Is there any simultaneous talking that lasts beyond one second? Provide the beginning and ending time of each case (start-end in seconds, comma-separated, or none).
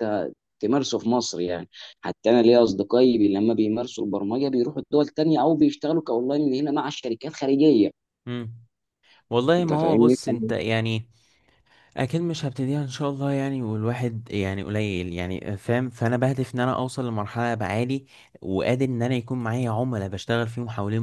none